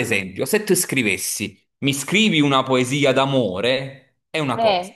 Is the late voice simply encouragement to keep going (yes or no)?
yes